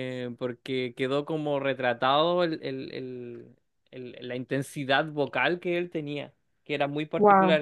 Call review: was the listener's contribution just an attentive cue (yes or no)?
yes